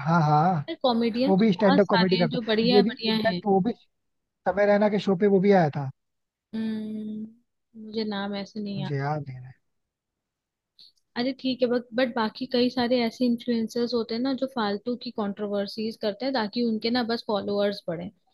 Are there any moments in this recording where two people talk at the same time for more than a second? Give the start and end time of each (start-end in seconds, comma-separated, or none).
1.3-3.4